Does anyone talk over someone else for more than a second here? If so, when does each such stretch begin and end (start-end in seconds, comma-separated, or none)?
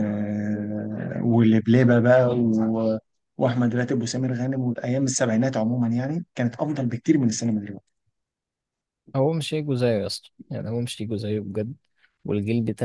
none